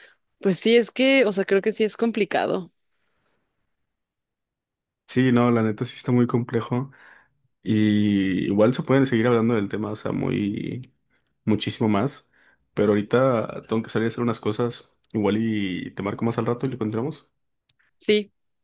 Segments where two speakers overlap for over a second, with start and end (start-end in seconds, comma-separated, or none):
none